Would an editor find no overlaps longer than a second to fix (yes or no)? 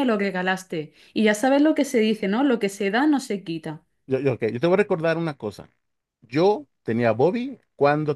yes